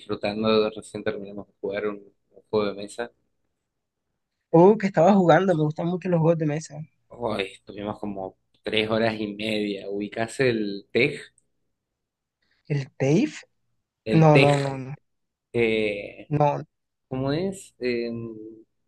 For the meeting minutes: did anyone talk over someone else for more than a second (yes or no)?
no